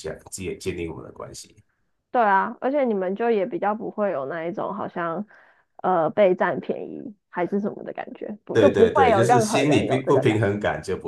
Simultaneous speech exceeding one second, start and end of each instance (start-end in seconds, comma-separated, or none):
8.5-10.4